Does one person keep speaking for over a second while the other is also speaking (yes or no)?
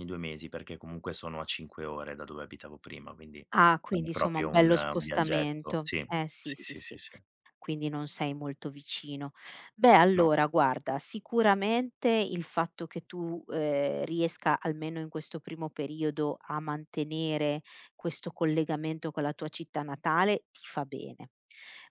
yes